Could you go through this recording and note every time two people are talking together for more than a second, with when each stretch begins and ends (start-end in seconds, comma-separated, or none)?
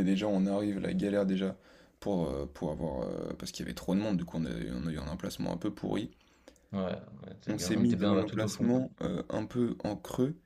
7.5-8.7